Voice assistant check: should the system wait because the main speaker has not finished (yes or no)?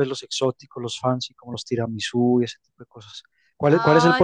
yes